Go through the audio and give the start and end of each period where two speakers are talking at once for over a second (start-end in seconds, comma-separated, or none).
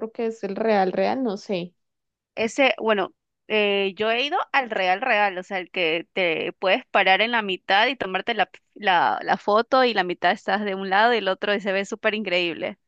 none